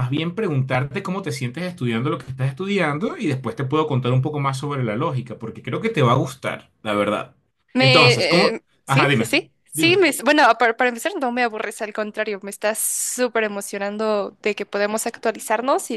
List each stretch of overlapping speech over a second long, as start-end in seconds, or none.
7.8-10.0